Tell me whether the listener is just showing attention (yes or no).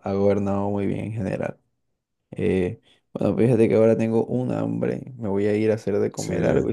yes